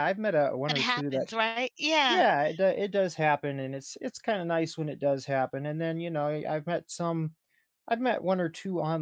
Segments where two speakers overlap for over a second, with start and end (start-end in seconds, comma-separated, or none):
none